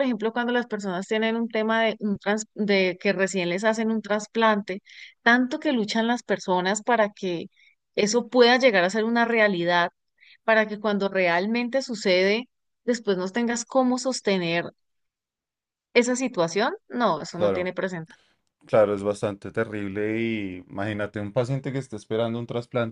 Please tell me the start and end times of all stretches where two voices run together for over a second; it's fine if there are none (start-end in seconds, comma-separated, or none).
none